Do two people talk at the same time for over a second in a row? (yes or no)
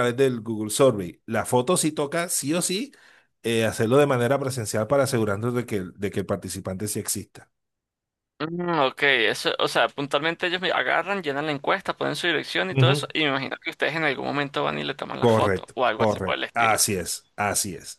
yes